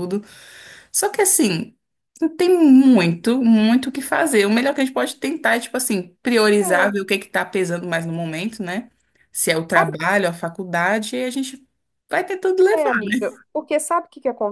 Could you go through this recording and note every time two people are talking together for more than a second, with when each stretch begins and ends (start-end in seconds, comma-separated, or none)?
none